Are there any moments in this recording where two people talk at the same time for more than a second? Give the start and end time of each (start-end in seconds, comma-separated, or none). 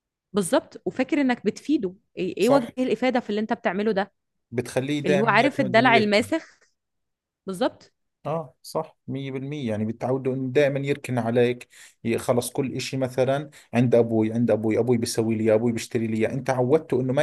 5.1-6.3